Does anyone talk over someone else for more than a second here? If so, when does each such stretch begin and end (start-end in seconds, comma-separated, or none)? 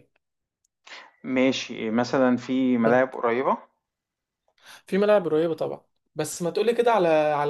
none